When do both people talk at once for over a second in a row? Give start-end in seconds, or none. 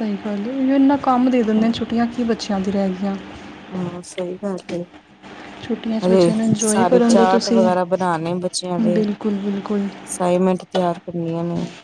6.0-7.7